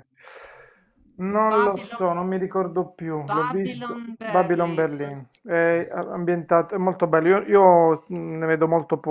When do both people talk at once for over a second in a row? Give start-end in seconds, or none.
3.3-4.8